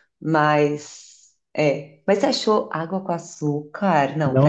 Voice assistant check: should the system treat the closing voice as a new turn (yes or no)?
yes